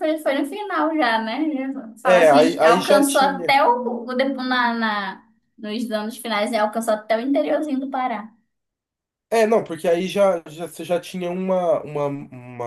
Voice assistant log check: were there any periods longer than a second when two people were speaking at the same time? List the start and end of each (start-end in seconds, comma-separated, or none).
2.0-3.6